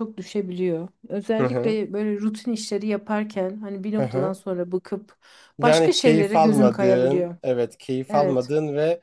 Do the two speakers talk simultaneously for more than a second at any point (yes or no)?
yes